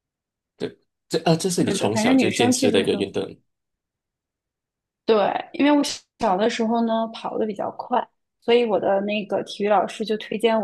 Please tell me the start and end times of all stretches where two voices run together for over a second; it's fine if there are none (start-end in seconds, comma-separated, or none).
1.6-3.1